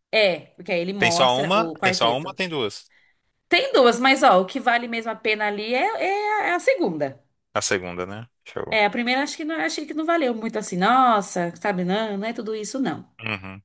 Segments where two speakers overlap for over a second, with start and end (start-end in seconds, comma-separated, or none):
1.0-2.4